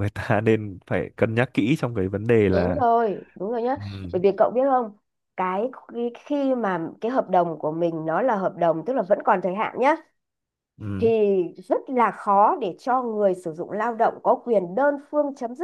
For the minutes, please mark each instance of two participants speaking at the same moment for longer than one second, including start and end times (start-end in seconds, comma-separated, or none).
none